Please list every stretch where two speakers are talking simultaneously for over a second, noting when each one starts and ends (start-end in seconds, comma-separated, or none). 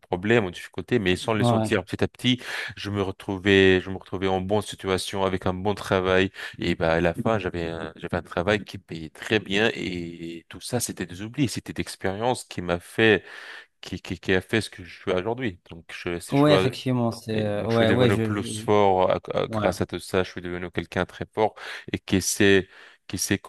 17.3-18.6